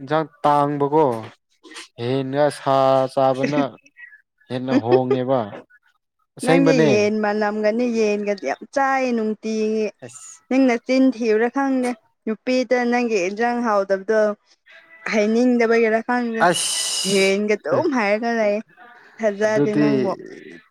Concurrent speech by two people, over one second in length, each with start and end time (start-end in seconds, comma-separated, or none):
none